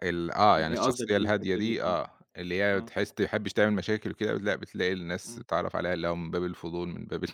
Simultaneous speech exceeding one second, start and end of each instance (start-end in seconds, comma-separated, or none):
0.5-2.0